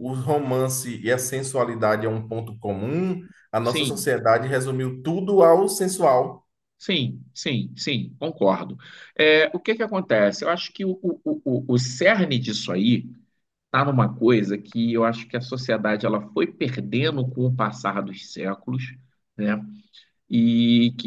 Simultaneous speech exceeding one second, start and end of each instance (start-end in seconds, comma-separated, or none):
none